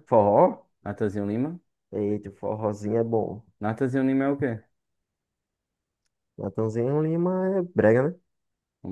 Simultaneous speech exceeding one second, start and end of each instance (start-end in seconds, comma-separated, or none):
none